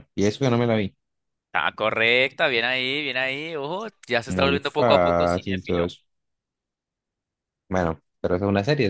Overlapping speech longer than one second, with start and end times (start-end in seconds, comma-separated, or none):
4.3-5.9